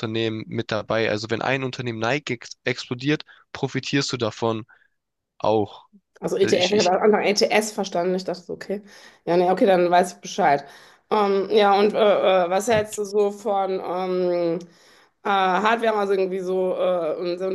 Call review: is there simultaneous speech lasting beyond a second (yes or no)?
no